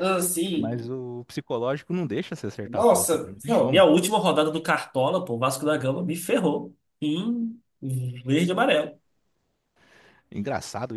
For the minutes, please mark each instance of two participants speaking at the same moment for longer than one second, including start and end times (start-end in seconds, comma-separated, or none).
2.6-3.8